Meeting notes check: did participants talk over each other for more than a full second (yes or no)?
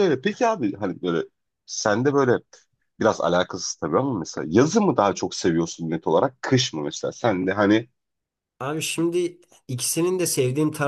no